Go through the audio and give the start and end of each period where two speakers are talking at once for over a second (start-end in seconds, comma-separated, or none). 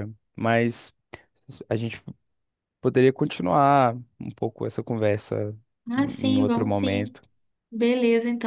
6.0-7.2